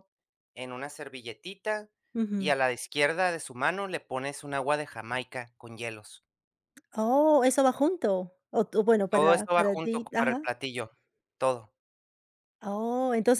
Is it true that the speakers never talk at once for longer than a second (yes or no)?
no